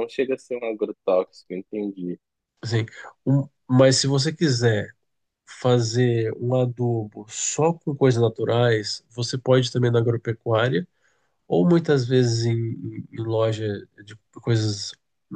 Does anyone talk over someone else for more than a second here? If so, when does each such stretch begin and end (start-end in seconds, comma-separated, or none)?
none